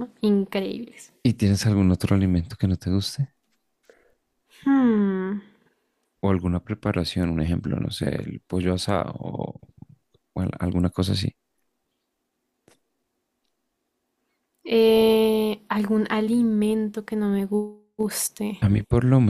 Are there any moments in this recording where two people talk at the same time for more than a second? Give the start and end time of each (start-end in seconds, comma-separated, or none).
none